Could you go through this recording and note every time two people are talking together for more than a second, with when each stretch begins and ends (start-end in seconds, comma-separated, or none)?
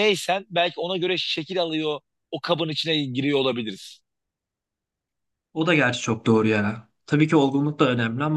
none